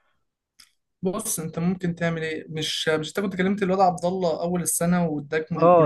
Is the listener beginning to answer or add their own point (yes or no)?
yes